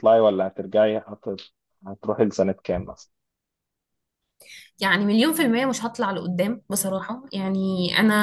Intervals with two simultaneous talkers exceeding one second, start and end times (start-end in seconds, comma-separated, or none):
none